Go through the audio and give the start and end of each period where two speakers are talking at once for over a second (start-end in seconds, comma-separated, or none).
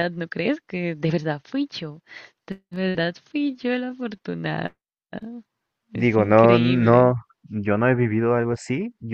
5.9-7.1